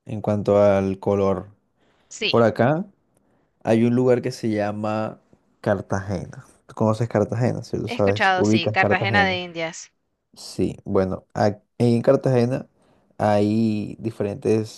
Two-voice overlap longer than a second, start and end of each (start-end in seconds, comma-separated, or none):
7.8-9.4